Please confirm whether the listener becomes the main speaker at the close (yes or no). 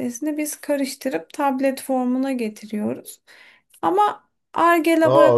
yes